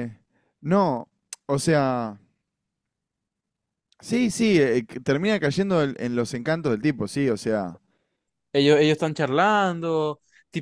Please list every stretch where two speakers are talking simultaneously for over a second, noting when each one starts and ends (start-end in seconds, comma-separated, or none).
none